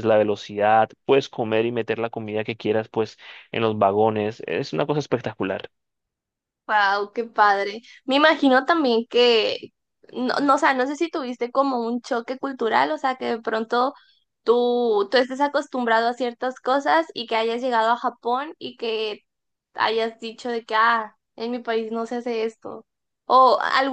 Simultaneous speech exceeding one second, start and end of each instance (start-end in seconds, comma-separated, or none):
none